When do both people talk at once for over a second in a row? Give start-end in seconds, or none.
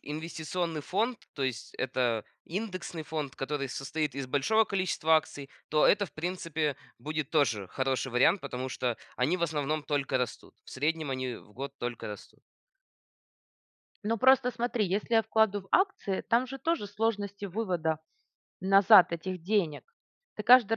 none